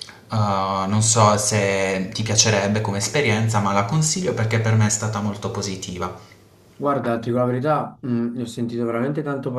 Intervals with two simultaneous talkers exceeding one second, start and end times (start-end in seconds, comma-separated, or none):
none